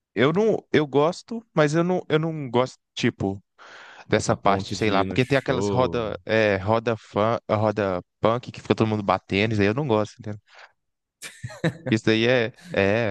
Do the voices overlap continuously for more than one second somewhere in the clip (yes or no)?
yes